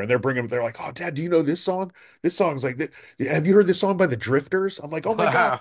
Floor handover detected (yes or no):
no